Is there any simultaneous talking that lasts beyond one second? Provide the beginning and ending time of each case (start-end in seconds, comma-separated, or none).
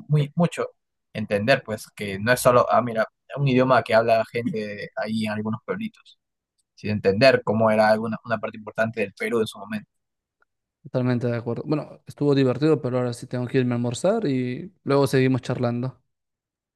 none